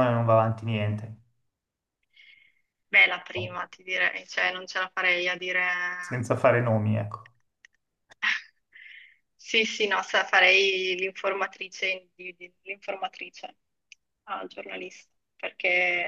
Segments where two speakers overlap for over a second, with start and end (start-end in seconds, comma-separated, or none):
none